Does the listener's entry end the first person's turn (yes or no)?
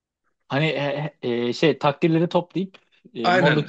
yes